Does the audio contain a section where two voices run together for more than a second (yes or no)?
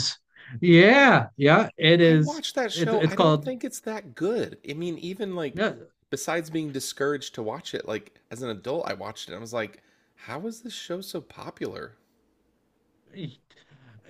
yes